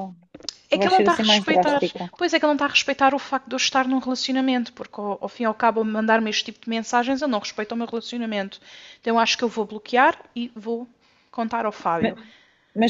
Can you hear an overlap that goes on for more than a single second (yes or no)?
yes